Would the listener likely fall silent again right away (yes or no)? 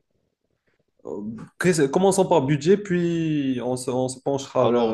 no